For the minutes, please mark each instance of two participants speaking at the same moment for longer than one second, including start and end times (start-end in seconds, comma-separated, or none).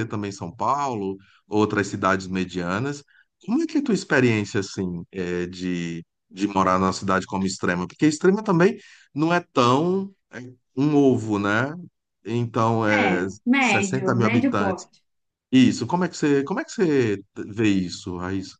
12.9-14.9